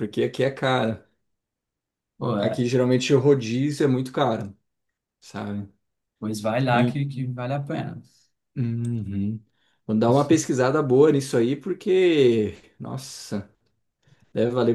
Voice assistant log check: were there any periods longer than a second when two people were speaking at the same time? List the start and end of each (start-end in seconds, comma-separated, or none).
none